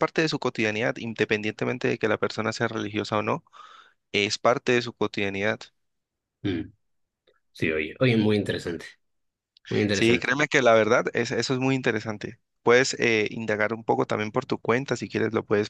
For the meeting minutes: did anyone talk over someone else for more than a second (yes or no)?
no